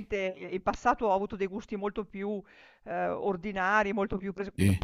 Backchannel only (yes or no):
yes